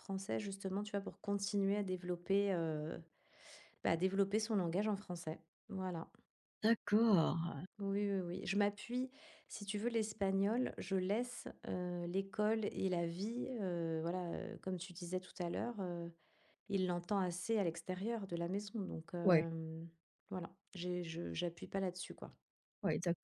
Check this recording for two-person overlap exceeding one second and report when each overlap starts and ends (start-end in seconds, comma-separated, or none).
none